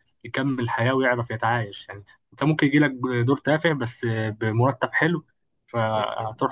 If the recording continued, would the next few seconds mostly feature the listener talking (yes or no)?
no